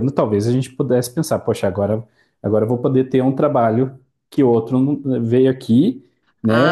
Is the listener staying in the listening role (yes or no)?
no